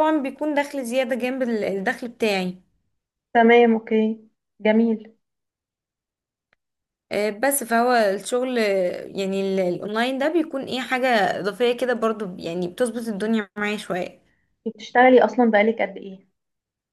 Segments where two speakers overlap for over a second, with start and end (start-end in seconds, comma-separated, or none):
none